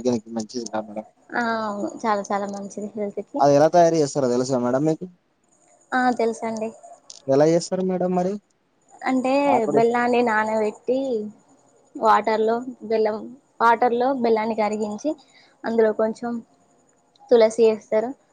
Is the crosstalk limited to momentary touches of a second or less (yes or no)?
yes